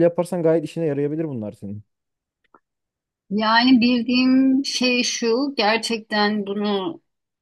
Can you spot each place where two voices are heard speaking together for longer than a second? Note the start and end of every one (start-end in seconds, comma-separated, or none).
none